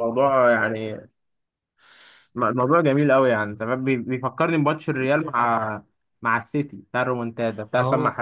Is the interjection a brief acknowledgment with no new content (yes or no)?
no